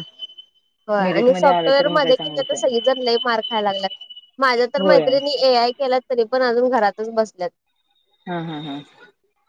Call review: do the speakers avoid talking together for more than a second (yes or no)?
no